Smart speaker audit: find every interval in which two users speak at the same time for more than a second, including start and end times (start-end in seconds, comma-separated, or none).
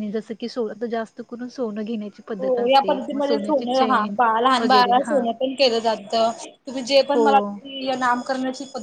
2.4-4.0